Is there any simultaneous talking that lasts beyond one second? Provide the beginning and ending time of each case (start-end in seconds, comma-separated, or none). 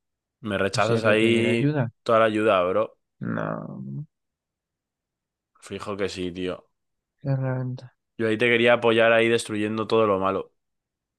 0.7-1.9